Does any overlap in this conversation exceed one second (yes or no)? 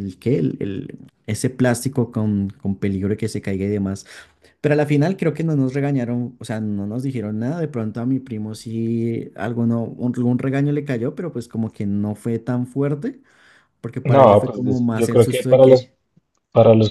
yes